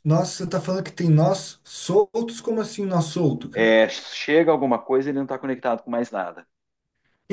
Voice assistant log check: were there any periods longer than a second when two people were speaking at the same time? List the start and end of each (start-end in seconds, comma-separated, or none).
none